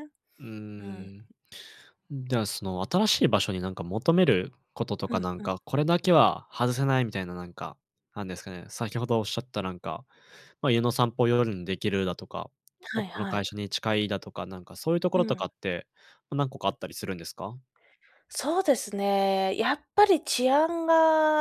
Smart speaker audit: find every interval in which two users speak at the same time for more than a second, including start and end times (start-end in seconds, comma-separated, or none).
none